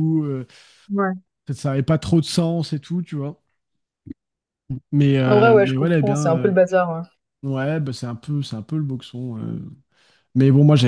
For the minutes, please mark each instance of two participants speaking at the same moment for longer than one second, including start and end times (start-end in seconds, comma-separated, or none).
5.2-6.5